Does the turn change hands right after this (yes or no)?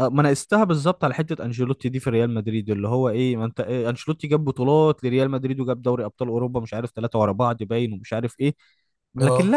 no